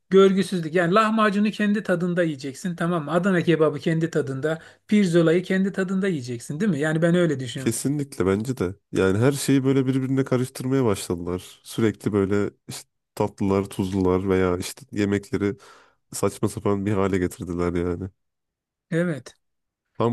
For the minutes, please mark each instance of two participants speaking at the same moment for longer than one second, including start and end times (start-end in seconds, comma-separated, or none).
none